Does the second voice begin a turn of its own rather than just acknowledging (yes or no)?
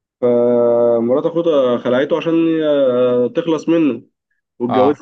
no